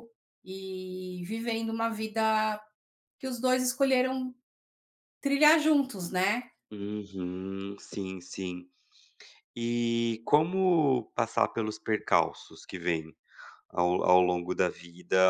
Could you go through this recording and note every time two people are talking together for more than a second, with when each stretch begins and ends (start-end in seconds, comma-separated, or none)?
none